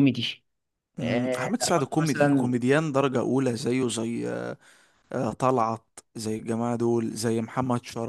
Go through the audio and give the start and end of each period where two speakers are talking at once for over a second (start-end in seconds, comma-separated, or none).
1.0-2.5